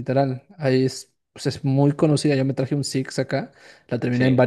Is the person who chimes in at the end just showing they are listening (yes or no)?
yes